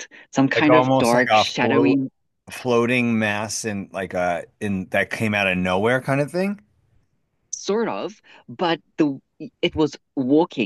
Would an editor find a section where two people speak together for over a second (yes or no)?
yes